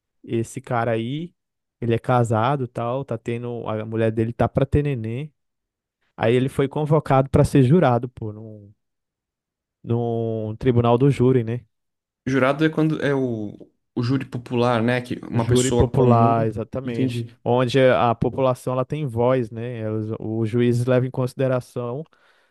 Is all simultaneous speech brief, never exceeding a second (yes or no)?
no